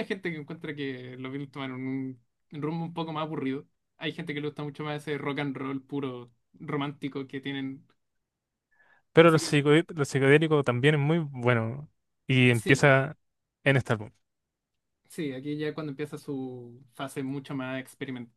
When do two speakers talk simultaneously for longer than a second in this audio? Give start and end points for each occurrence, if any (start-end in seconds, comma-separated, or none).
none